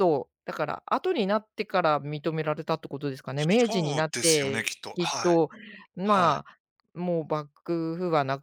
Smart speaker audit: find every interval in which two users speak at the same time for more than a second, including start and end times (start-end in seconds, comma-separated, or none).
3.7-5.3